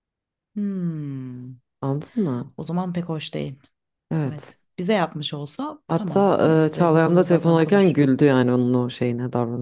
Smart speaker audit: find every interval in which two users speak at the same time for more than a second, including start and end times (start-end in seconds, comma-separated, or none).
5.9-8.1